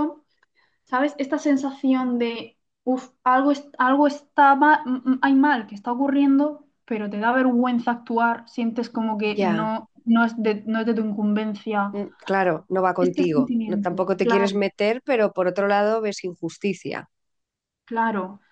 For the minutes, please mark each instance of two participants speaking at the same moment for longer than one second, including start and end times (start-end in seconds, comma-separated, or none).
13.0-14.6